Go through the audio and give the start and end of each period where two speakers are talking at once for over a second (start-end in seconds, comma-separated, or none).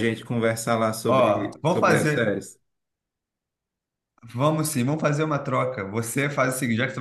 1.1-2.4